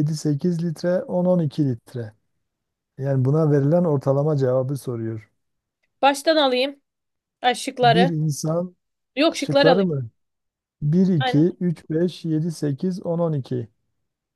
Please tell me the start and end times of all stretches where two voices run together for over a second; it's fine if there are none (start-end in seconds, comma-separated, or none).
none